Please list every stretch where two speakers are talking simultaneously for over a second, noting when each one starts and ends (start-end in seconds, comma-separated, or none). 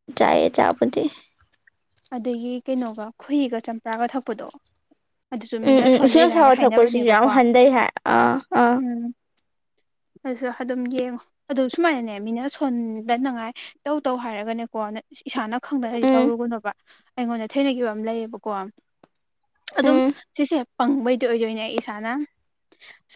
5.7-7.3